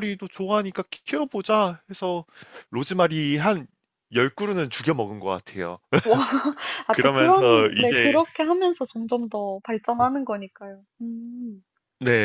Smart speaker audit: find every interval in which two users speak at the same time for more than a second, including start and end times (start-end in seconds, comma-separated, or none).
6.9-8.2